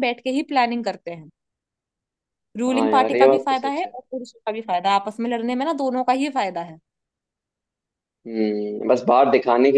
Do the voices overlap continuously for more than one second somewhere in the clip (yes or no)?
yes